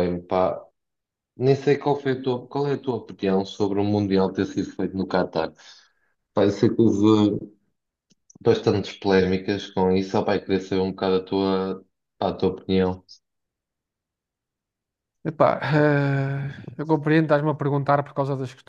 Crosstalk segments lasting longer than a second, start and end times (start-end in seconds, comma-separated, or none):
none